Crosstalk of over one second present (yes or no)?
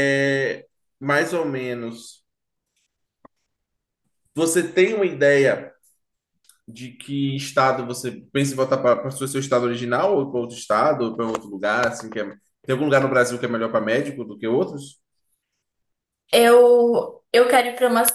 no